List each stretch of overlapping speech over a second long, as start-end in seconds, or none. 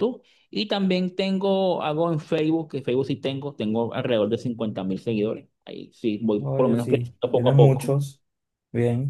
6.4-8.0